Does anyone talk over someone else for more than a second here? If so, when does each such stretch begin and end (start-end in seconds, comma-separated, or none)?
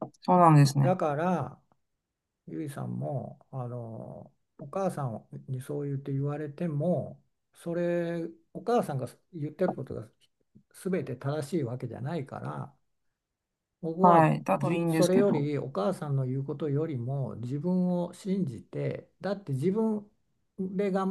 14.0-15.5